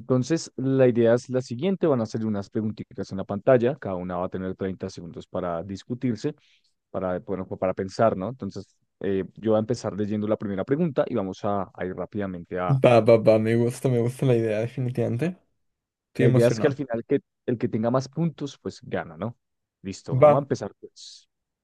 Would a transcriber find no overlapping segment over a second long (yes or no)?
yes